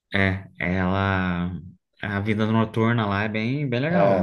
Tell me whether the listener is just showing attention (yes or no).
no